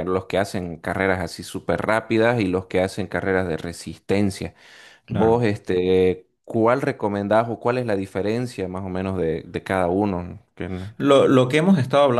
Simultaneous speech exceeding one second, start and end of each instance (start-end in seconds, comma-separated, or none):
none